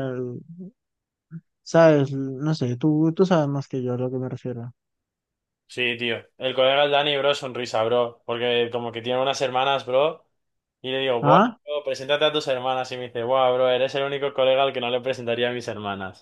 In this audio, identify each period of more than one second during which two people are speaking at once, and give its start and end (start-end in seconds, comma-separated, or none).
none